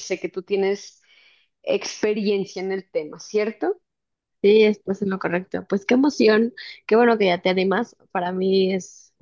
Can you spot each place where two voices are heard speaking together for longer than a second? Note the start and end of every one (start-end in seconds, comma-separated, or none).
none